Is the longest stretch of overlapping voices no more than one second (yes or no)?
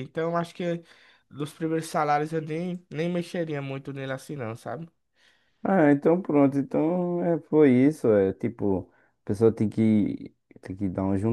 yes